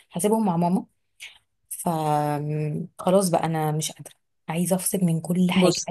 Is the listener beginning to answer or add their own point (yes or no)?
no